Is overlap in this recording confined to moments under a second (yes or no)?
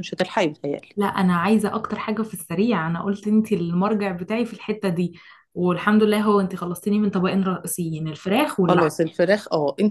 yes